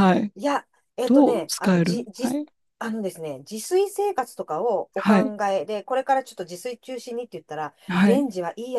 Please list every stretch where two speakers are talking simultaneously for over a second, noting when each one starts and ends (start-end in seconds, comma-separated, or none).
1.1-2.4